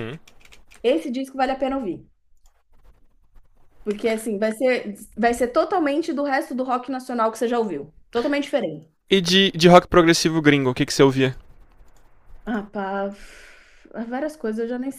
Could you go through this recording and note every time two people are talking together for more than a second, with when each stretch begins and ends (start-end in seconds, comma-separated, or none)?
none